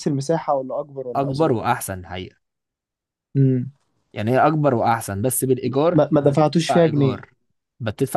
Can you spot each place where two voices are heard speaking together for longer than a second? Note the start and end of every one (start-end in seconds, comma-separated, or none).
5.9-7.2